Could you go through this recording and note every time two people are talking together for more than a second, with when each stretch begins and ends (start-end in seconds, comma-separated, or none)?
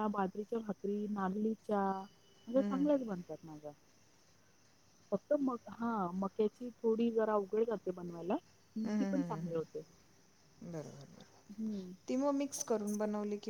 none